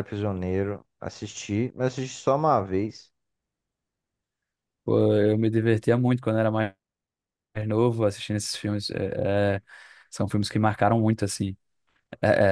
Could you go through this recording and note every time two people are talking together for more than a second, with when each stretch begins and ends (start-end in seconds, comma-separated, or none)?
none